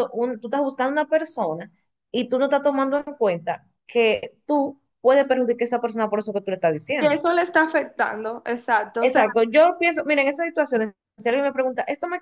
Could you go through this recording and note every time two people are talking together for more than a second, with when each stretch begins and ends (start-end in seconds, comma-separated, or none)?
none